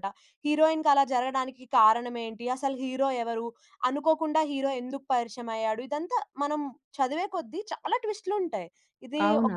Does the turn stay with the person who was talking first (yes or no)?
yes